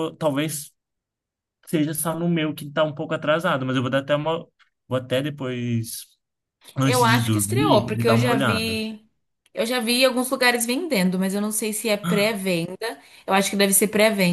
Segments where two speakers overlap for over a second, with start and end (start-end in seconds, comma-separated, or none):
6.8-8.8